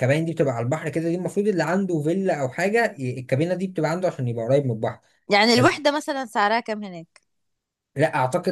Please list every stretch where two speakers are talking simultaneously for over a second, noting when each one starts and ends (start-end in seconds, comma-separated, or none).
none